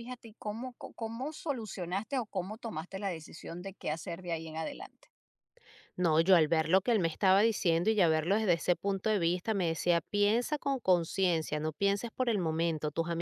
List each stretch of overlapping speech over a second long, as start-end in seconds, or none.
none